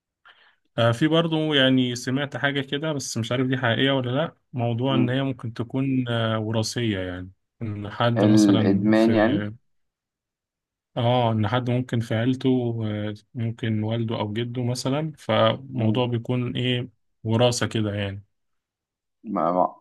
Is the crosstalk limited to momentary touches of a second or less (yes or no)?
no